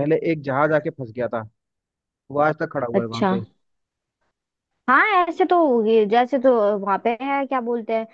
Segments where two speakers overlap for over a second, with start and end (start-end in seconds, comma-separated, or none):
none